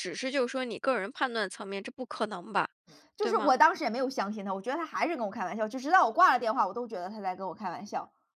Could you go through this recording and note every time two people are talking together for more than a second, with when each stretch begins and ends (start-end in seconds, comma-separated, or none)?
none